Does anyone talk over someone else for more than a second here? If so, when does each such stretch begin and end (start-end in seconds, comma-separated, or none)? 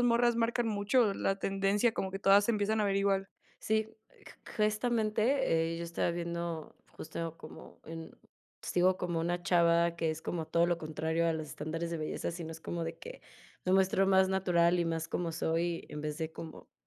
none